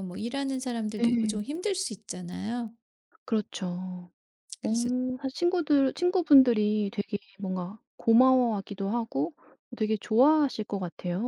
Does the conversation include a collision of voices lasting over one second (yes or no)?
no